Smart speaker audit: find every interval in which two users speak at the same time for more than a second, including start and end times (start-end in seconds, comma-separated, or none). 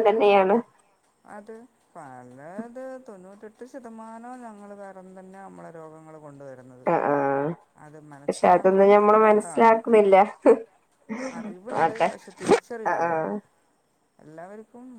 8.2-9.7